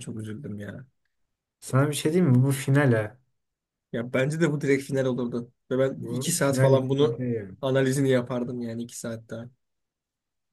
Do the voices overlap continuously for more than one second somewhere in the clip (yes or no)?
yes